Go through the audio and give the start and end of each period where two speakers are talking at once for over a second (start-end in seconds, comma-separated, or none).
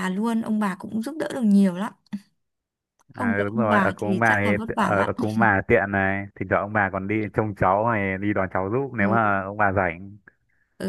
3.1-5.1